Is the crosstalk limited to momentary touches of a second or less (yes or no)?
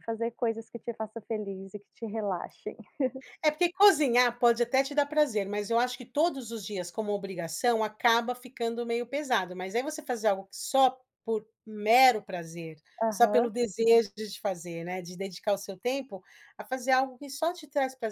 yes